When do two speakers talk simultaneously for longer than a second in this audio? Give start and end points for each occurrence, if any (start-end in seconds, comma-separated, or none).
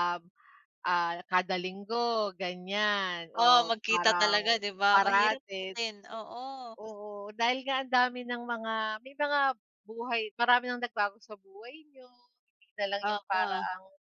3.4-5.8